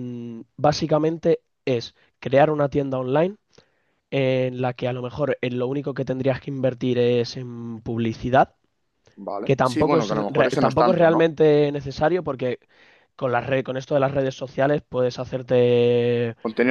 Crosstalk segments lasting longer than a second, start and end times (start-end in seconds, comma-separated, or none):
9.4-11.3